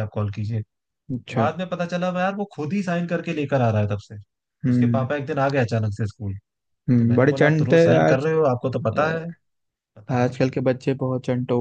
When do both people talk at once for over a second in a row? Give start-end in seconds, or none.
7.0-8.3